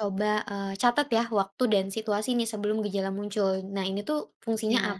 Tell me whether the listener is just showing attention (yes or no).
yes